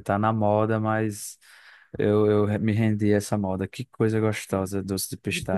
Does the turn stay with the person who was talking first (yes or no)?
no